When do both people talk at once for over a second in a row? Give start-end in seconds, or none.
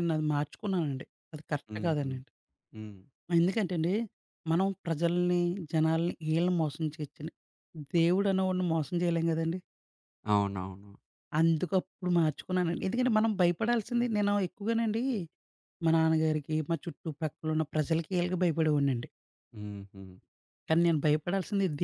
none